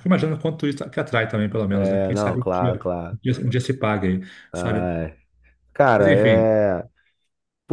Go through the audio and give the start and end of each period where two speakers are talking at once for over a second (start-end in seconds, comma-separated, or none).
1.7-3.2